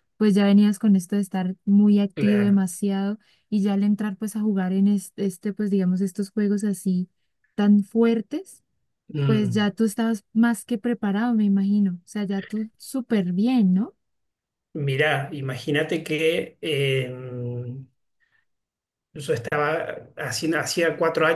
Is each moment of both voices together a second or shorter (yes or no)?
yes